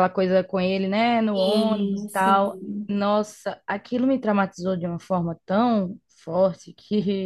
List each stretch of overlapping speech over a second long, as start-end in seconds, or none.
1.3-3.0